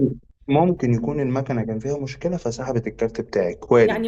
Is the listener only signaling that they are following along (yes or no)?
no